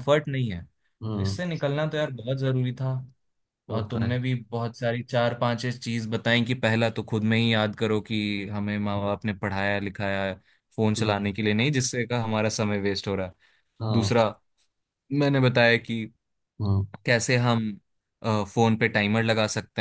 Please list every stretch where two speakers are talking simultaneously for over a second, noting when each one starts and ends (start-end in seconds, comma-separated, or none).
none